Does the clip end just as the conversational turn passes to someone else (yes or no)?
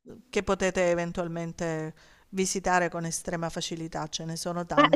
yes